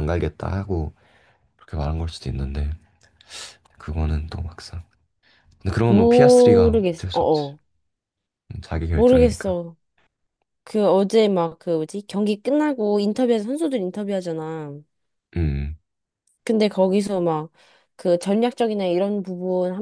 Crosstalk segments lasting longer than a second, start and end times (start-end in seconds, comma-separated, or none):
5.9-7.5